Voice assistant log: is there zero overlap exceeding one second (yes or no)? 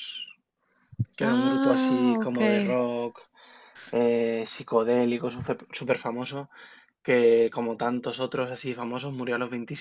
no